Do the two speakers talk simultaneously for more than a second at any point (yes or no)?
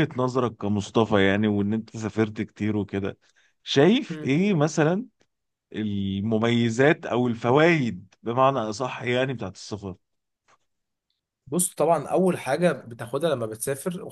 no